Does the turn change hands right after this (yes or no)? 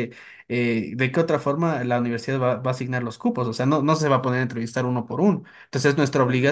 no